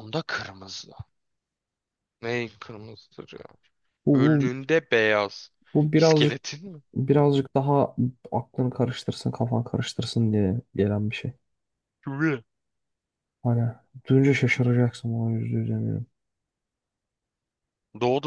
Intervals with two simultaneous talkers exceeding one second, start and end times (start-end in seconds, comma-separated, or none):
none